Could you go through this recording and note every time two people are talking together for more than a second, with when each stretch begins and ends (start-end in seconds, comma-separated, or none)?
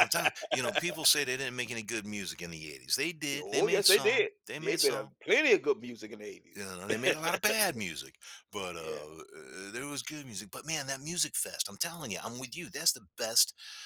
3.4-5.1